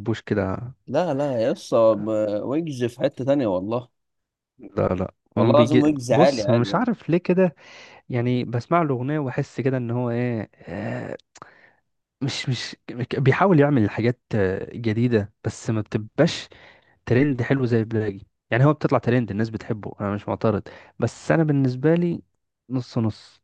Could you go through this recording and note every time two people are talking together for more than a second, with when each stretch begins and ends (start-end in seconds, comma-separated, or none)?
5.4-6.8